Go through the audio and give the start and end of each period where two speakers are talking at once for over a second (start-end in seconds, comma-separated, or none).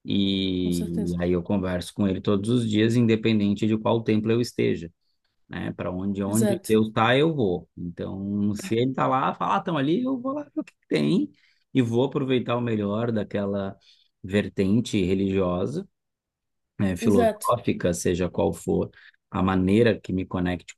none